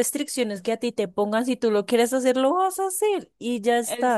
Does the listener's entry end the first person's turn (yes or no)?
yes